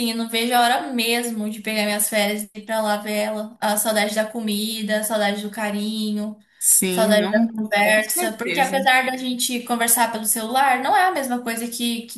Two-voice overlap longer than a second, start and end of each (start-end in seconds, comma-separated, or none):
6.9-8.9